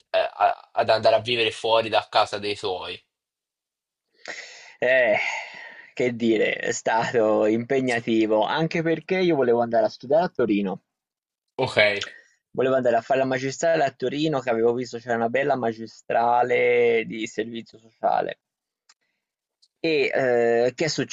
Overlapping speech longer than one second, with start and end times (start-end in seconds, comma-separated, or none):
none